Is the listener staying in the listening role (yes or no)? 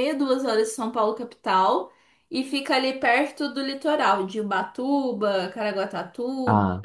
yes